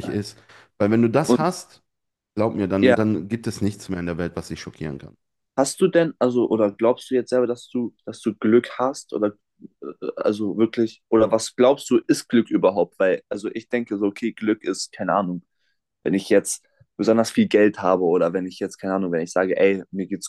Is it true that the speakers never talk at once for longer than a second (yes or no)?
yes